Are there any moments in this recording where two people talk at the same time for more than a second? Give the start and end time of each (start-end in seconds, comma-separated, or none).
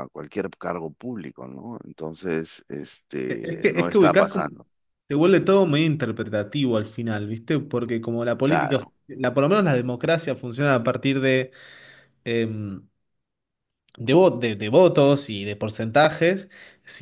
3.3-4.5